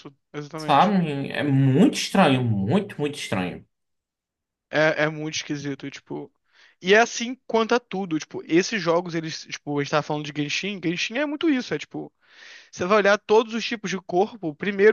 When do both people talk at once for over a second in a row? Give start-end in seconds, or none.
none